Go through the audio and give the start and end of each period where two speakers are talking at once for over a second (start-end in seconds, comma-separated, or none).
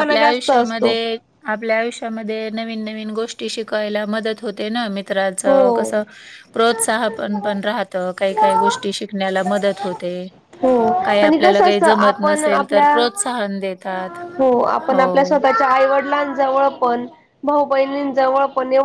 11.3-12.9